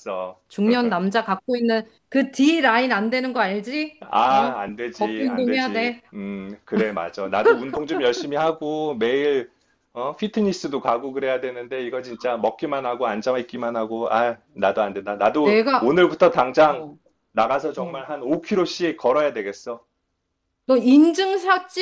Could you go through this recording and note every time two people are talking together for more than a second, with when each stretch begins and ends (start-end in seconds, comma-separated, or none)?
4.0-6.0